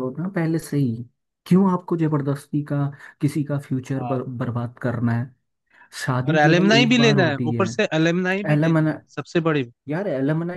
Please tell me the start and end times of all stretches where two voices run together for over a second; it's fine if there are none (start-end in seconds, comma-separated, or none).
6.3-7.7